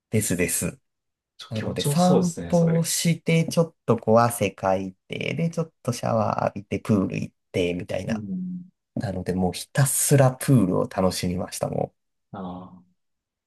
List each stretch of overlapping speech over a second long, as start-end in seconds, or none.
1.5-2.9